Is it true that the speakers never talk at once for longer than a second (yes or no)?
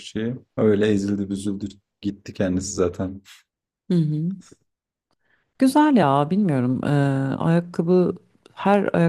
yes